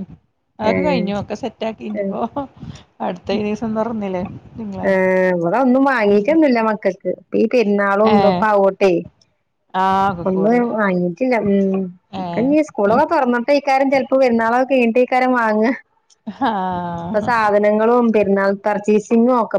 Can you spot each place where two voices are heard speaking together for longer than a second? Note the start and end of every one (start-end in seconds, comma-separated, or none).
none